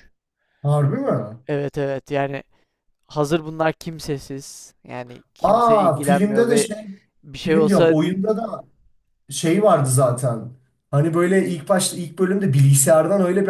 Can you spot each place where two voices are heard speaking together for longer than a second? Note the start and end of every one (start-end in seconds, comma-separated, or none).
5.4-6.7